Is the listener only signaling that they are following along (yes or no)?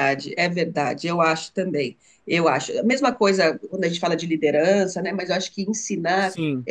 yes